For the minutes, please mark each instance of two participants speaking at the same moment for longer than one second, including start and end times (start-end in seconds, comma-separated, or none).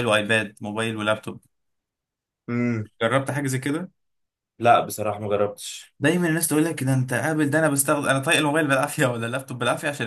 none